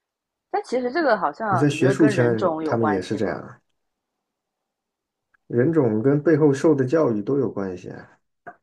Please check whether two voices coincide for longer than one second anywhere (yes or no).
yes